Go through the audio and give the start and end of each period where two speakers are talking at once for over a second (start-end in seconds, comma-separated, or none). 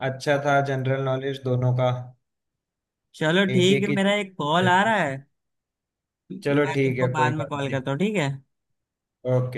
6.4-7.8